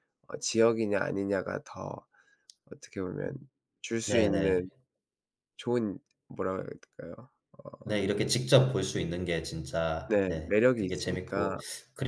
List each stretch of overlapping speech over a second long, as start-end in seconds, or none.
10.1-11.6